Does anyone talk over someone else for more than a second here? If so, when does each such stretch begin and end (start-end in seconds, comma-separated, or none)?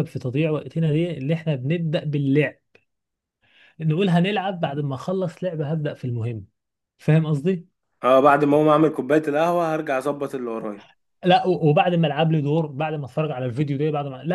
none